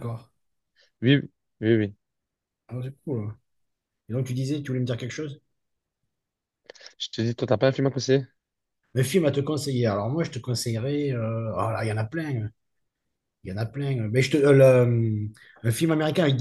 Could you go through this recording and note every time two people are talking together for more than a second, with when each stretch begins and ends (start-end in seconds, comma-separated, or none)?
none